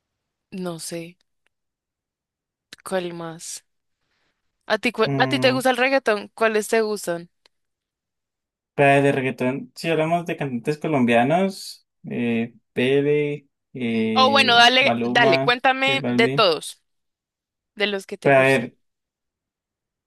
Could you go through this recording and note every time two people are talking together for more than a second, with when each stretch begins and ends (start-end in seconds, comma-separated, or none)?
14.1-16.5